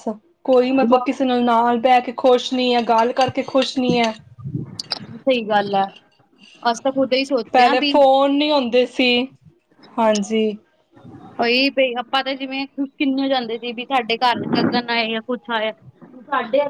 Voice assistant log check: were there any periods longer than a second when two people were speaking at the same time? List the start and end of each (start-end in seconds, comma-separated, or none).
none